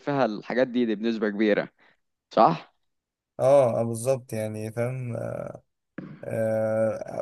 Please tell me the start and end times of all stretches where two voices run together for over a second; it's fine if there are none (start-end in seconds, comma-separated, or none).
none